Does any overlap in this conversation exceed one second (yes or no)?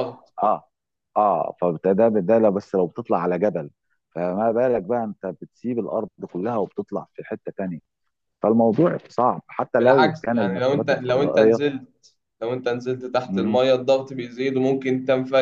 yes